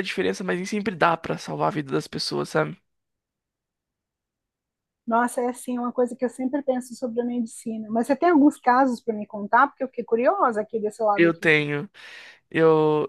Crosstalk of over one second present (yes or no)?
no